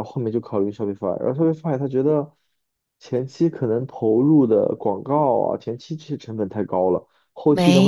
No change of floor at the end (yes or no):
no